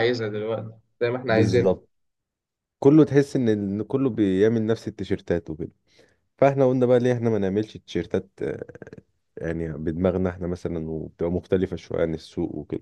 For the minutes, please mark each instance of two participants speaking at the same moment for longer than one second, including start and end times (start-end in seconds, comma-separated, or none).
none